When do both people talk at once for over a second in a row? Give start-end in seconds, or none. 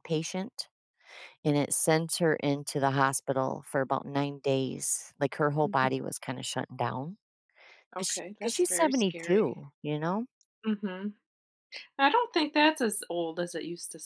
8.0-9.7